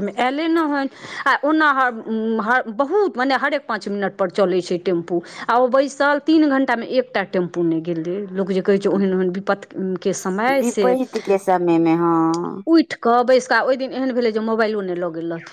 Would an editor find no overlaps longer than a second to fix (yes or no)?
yes